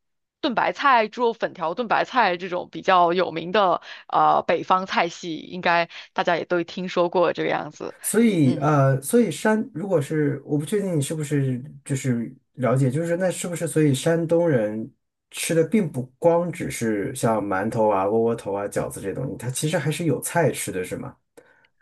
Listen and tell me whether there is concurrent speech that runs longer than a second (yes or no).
no